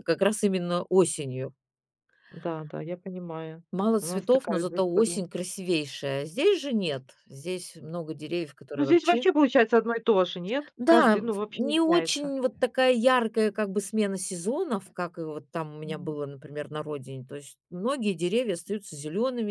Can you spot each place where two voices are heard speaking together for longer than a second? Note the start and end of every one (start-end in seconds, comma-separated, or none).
4.0-5.2, 10.8-12.3